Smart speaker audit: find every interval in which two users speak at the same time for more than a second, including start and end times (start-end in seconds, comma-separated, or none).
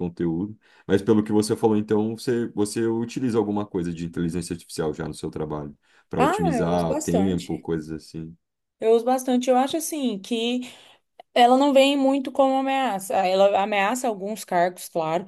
6.2-7.6